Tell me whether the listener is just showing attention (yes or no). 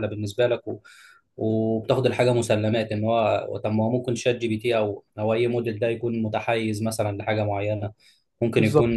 yes